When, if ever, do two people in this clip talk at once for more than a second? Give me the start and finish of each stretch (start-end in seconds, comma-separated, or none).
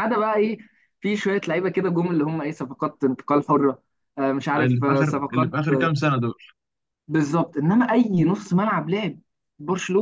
4.5-5.9